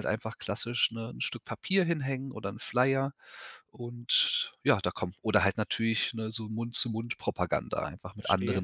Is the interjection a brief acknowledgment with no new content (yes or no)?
no